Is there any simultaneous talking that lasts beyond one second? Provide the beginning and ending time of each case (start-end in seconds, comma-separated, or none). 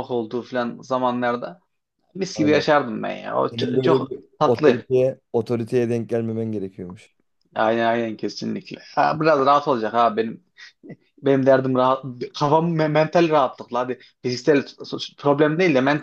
3.5-4.9